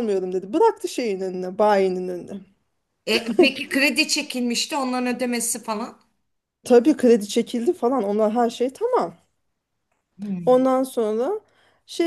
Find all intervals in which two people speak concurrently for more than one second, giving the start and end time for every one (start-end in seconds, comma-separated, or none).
none